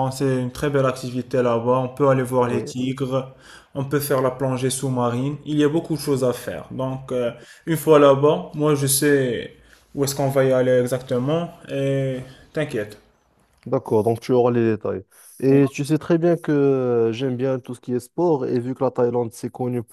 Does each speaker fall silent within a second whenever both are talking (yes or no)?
yes